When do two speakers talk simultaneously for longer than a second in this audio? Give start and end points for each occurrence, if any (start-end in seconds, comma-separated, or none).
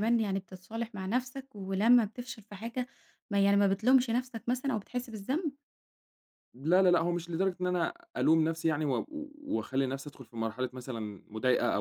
none